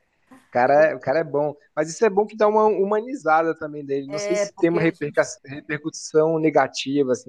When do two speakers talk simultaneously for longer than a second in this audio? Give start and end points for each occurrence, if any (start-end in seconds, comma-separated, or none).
4.1-5.3